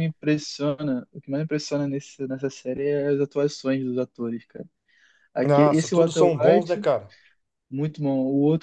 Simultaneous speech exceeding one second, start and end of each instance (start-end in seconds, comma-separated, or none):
5.4-6.8